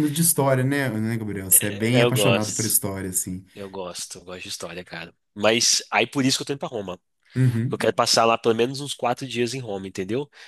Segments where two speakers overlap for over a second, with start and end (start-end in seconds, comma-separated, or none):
1.5-2.8